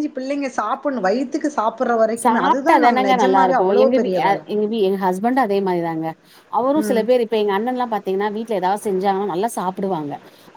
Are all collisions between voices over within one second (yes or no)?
no